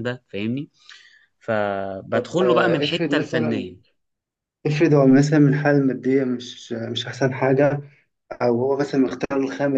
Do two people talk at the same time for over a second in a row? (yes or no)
yes